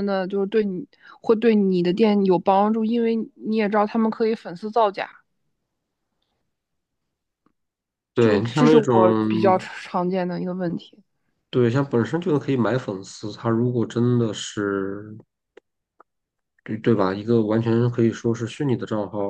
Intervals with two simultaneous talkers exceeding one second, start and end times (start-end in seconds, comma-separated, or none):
8.2-9.7